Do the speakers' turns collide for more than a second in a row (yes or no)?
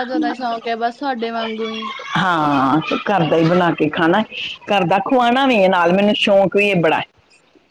no